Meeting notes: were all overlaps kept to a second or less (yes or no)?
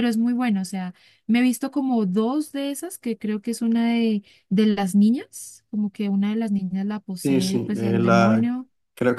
no